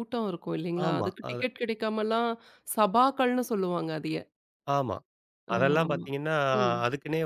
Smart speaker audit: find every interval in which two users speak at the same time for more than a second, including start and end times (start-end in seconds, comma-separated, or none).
none